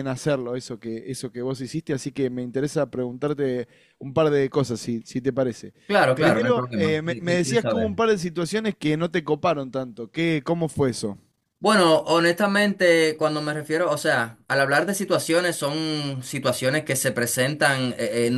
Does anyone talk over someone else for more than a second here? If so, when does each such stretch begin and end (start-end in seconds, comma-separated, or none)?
6.2-8.0